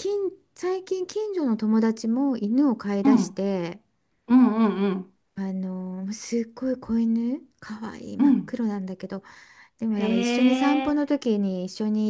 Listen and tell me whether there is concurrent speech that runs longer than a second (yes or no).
no